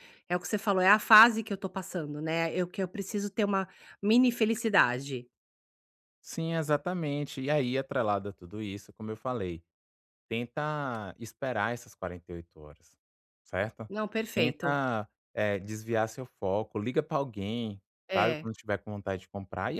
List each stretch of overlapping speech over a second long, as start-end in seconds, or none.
none